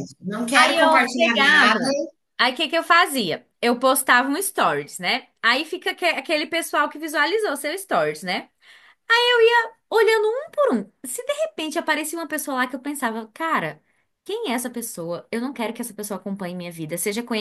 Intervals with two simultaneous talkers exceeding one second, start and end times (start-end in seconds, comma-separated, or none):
0.6-1.8